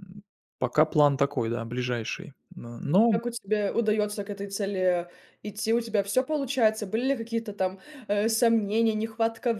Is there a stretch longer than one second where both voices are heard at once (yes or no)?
no